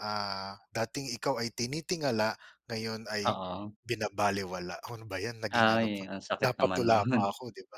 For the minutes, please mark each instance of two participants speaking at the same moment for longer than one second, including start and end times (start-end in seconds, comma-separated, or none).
5.6-7.2